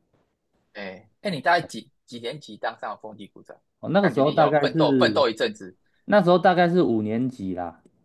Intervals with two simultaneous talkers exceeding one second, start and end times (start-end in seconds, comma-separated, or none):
4.0-5.2